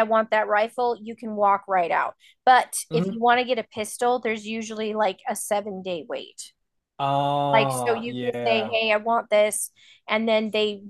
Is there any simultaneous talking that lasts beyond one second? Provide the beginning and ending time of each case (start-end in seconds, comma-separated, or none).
7.5-8.8